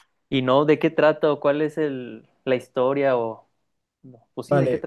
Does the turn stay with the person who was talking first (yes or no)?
no